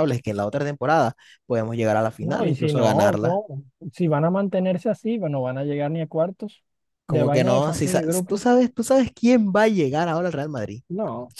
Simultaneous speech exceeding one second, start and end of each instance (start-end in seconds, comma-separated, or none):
2.2-3.4, 7.1-8.5